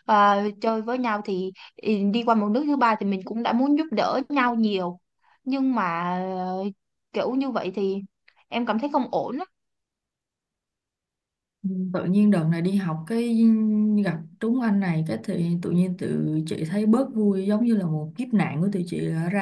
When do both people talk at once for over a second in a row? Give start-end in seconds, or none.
none